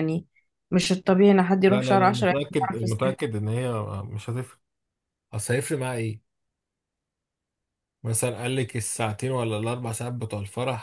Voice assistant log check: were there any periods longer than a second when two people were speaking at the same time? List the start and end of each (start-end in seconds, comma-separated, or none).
1.7-3.1